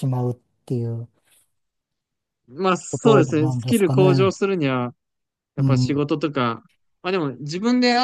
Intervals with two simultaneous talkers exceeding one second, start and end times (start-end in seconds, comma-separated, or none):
2.9-4.3